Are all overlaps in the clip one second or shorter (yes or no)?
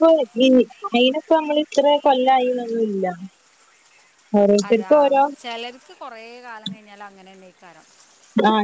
yes